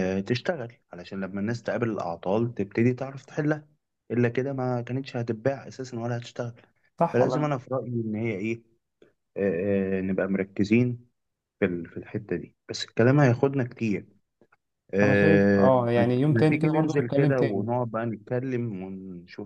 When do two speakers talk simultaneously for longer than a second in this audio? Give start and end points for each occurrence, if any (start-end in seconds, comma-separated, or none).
15.0-17.7